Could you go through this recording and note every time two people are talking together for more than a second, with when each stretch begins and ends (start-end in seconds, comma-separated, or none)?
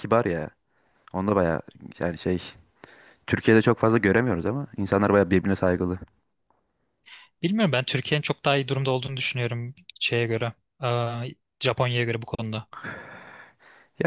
none